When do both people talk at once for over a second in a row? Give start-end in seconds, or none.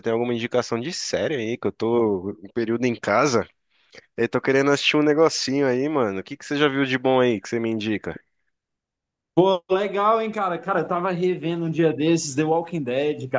none